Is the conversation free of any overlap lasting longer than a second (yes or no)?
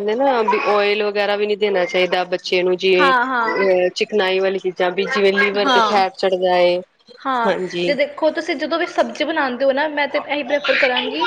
yes